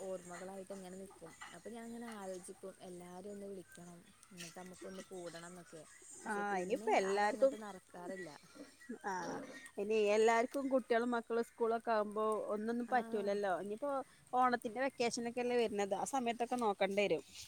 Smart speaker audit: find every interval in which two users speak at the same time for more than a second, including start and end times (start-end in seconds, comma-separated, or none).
none